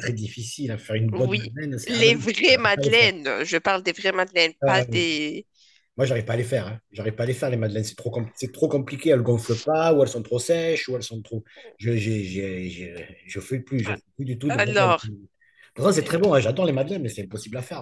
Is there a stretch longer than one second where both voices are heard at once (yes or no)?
yes